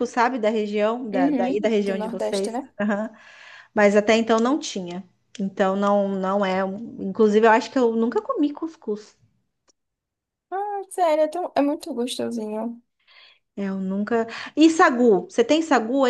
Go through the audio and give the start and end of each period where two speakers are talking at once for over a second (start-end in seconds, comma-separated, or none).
1.1-2.7